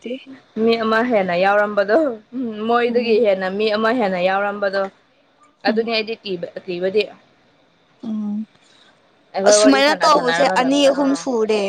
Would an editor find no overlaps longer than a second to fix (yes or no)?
no